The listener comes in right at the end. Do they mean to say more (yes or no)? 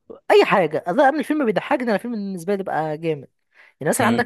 yes